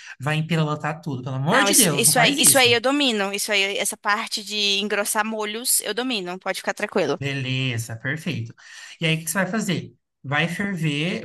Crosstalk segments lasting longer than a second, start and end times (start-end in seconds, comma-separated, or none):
1.5-2.8